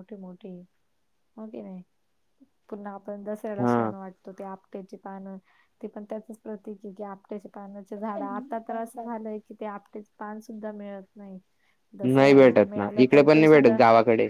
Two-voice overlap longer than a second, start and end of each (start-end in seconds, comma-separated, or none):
12.2-13.8